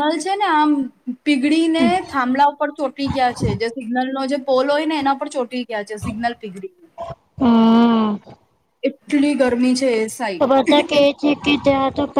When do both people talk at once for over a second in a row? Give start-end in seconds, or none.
none